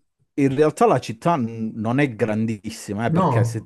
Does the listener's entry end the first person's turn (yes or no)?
no